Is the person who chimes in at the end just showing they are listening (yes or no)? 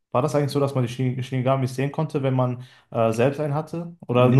no